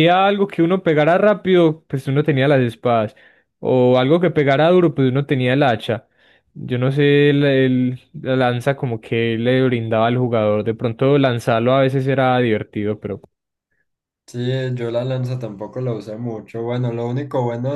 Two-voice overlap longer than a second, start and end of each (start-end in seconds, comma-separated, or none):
none